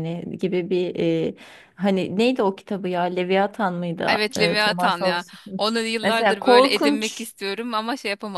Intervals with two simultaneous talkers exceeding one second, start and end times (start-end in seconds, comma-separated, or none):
4.1-7.3